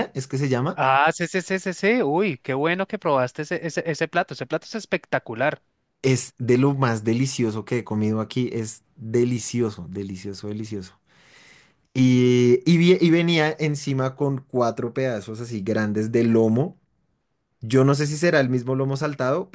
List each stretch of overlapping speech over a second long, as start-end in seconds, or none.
none